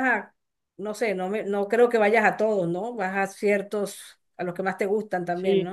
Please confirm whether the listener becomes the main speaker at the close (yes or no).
yes